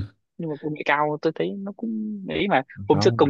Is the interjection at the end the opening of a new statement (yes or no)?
no